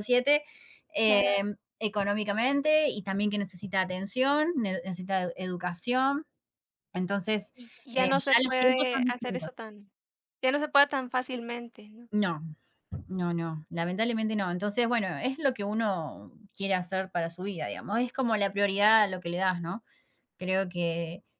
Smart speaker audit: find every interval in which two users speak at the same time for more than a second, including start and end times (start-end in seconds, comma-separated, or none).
7.9-9.5